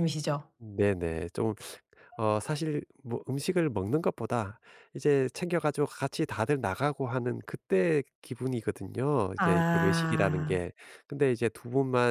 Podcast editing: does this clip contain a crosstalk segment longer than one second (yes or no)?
yes